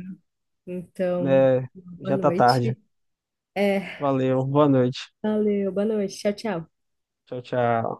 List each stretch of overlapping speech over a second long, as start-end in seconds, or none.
1.2-2.8